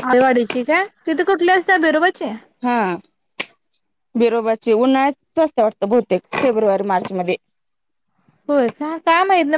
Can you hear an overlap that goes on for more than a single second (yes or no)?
no